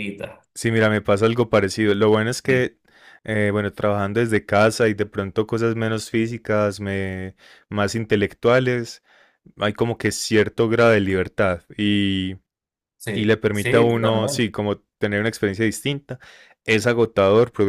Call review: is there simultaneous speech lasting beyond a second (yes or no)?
yes